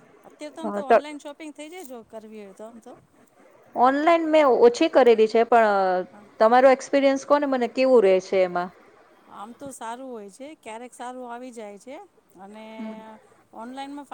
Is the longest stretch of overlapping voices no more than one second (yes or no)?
yes